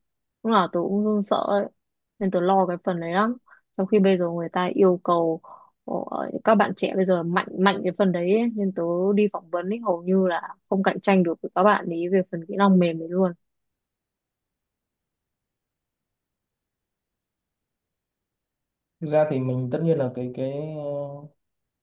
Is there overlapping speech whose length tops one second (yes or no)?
no